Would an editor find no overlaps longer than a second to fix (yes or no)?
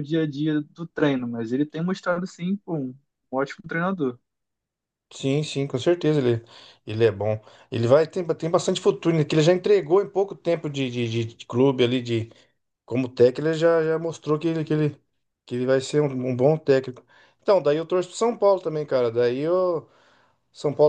yes